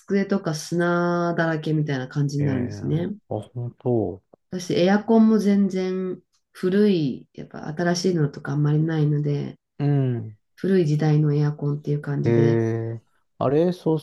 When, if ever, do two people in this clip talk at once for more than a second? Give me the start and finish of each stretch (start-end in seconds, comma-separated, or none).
none